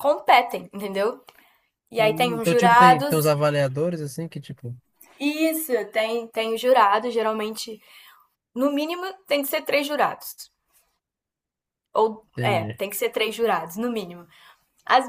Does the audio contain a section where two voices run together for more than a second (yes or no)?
yes